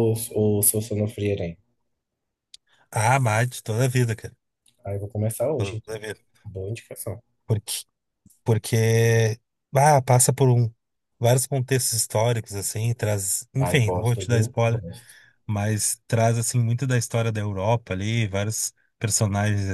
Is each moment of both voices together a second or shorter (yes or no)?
no